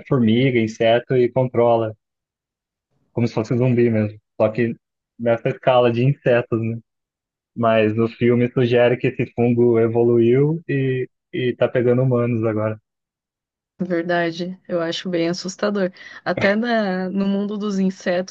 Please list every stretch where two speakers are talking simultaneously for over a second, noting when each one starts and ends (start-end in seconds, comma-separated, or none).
none